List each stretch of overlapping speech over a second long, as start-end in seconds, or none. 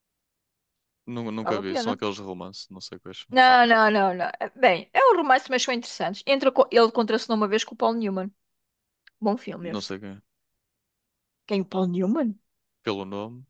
none